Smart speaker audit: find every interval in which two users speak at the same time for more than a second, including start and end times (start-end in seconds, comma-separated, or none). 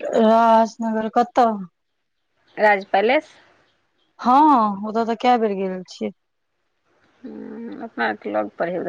none